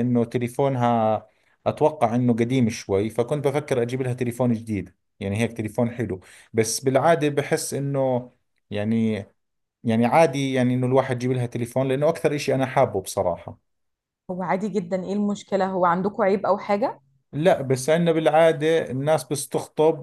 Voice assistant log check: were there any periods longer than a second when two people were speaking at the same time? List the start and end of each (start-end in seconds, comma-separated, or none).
none